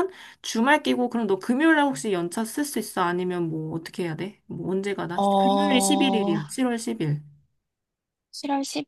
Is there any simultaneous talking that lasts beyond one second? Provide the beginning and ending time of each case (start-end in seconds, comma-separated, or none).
5.2-6.4